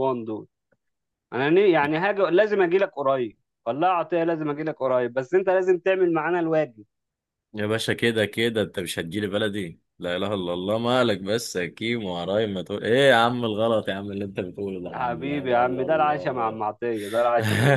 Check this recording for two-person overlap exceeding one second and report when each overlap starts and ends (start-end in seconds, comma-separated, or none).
14.9-16.6